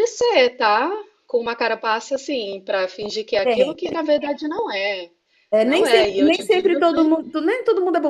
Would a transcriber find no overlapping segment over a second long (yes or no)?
no